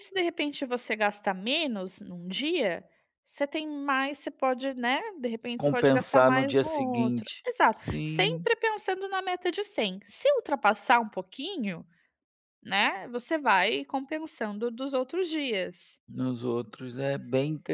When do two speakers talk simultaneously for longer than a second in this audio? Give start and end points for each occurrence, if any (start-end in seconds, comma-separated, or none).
5.6-8.4